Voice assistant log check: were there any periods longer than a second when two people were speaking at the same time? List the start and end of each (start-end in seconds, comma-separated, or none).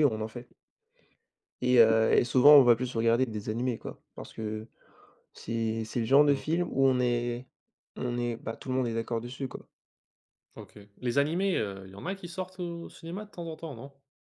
none